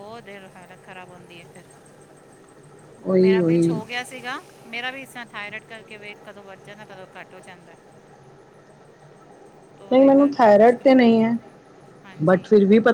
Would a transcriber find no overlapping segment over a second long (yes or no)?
no